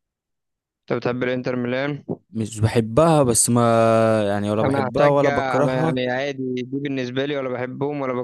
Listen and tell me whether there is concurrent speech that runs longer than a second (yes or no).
yes